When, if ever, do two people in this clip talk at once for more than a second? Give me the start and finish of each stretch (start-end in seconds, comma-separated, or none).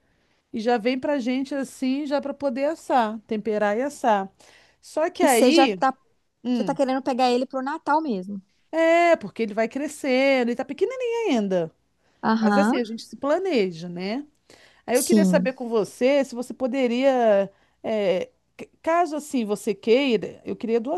none